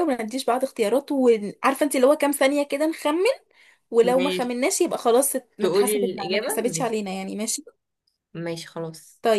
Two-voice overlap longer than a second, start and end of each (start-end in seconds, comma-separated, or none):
5.6-7.0